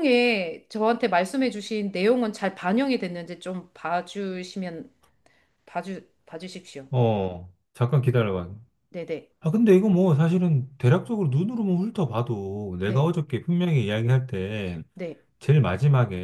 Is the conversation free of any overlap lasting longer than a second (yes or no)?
yes